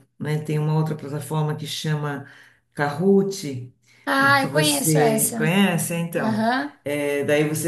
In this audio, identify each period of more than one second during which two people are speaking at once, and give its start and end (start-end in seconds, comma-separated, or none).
4.2-5.5